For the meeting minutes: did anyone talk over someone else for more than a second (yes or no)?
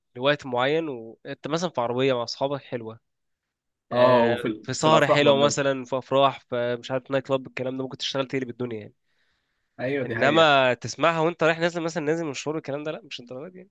yes